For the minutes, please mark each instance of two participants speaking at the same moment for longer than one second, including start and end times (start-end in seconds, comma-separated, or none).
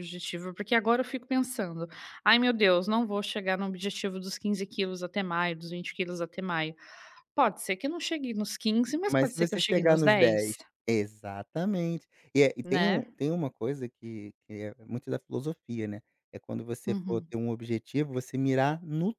9.1-10.6